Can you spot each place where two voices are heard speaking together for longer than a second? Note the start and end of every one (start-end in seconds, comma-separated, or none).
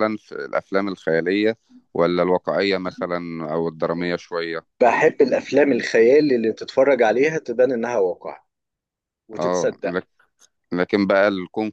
none